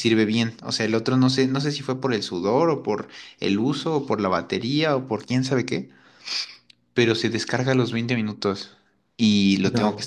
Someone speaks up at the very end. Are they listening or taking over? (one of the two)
listening